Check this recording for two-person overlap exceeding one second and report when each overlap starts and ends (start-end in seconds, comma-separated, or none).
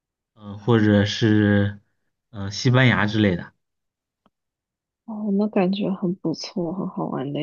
none